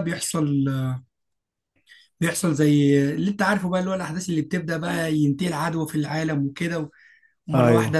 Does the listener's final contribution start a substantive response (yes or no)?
no